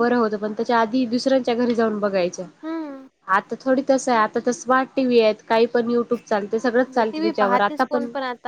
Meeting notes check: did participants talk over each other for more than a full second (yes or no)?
no